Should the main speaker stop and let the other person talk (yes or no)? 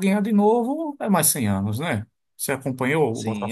yes